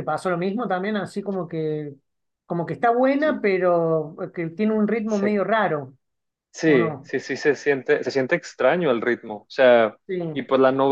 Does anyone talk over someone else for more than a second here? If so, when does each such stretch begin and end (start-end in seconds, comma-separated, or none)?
none